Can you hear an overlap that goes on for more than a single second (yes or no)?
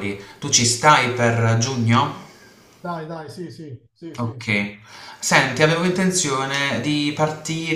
no